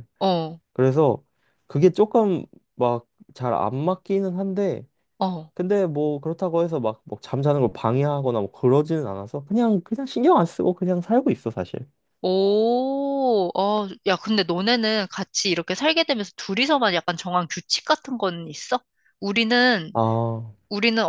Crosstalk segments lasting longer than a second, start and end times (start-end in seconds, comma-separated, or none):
none